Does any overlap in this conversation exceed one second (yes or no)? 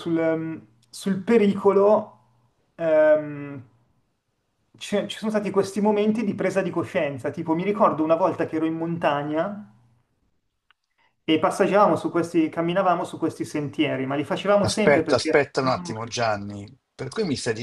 yes